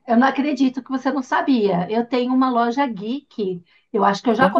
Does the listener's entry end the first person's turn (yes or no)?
no